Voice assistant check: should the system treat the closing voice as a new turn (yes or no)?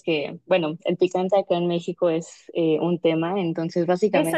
yes